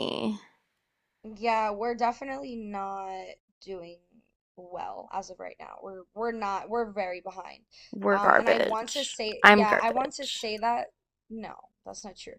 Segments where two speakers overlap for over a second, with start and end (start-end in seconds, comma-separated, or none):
8.1-10.5